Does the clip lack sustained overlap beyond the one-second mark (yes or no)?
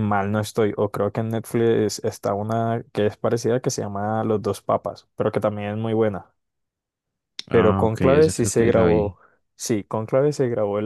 no